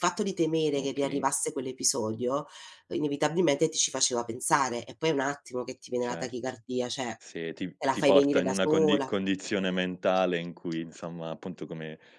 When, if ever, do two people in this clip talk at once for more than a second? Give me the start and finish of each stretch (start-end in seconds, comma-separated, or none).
7.8-9.1